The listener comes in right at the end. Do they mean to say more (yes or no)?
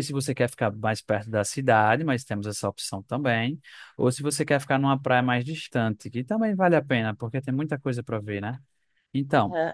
yes